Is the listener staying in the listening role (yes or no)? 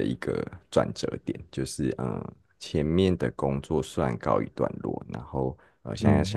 yes